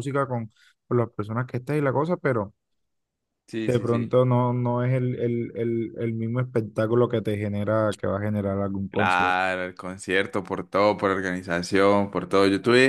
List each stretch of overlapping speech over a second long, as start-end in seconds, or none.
none